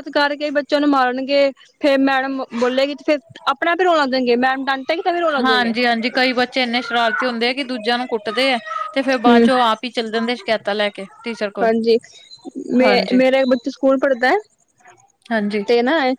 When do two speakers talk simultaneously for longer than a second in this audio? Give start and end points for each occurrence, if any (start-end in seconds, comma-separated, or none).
none